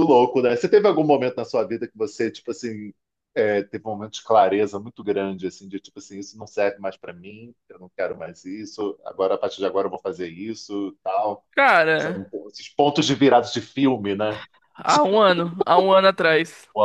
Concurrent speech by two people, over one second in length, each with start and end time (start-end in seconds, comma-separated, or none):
none